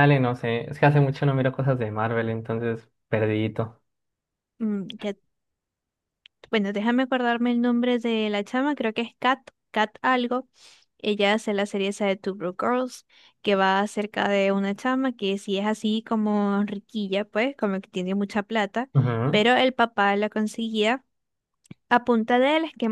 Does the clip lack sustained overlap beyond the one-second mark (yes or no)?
yes